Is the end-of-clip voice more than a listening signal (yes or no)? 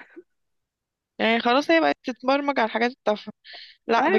no